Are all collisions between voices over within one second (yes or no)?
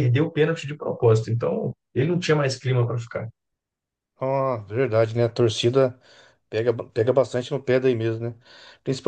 yes